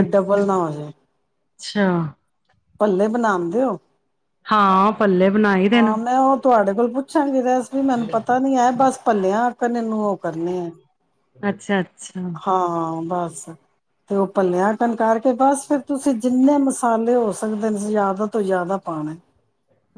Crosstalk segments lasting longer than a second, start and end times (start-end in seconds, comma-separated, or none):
none